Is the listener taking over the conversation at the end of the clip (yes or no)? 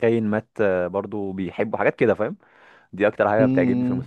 yes